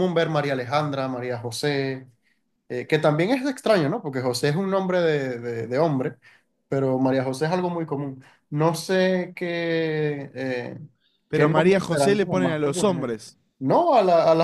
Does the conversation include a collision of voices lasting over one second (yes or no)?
yes